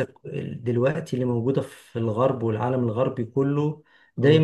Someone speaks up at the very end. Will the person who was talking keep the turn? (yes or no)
yes